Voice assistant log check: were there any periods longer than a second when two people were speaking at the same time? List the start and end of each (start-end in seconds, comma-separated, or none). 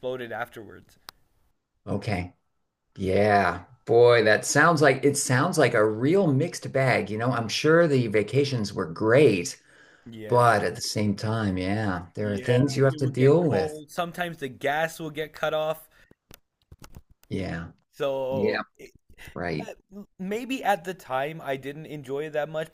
12.2-13.8